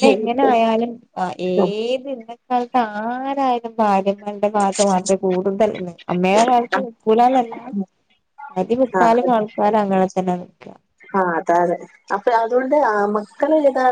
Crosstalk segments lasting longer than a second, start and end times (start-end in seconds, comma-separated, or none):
none